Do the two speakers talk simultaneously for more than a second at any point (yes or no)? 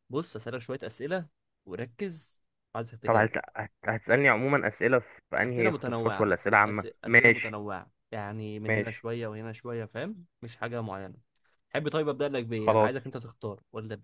yes